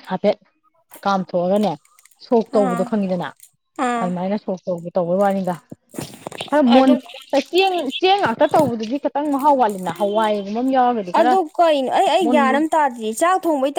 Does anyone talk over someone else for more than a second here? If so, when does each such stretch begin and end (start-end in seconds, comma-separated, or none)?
none